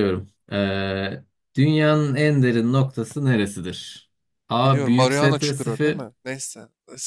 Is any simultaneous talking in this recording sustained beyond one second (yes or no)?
yes